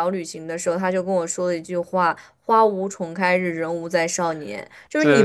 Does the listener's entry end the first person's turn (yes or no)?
no